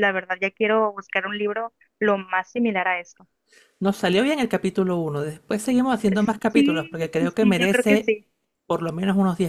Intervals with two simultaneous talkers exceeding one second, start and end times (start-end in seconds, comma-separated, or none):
6.5-8.1